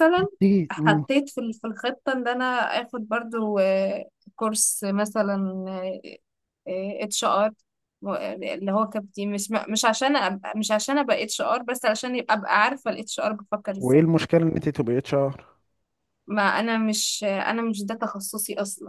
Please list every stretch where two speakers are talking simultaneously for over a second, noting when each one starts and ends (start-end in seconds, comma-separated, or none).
none